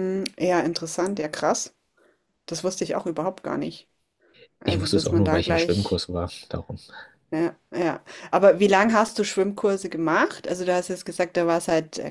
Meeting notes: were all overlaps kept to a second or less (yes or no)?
no